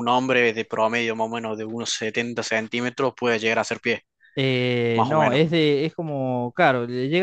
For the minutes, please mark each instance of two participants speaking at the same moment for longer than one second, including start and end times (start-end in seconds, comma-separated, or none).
none